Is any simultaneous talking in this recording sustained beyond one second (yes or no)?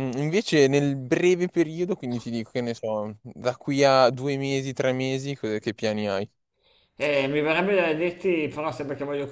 no